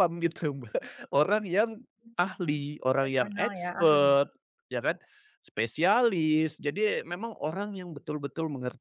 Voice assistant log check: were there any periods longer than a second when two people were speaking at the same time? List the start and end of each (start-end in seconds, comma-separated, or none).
2.2-4.2